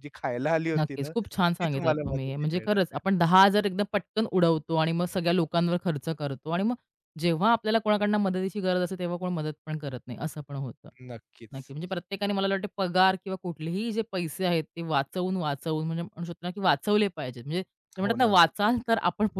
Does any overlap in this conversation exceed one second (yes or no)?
yes